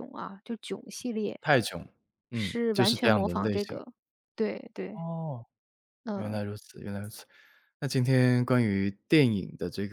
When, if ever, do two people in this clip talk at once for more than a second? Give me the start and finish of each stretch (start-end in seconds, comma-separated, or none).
2.3-3.8